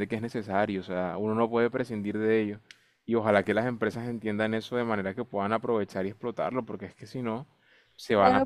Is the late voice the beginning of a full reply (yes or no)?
yes